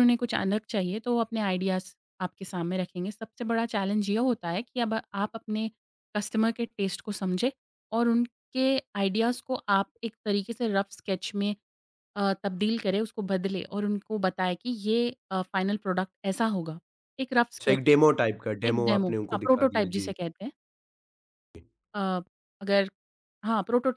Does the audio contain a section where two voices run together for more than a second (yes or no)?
yes